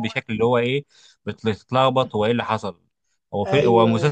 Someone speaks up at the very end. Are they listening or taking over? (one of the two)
listening